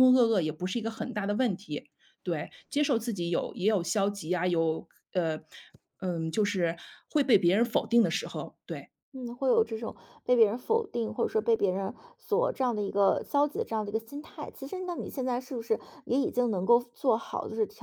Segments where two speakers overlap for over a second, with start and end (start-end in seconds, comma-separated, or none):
none